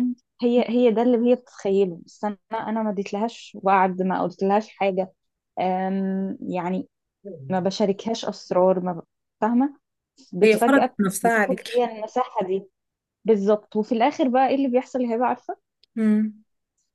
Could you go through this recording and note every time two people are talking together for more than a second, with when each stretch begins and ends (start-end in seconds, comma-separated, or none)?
10.4-11.8